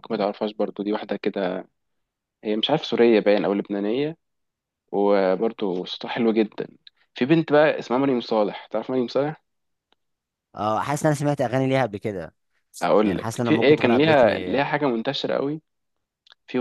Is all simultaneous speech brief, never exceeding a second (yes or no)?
no